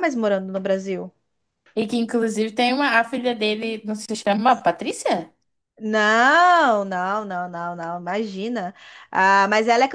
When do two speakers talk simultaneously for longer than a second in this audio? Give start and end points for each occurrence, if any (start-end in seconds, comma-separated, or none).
none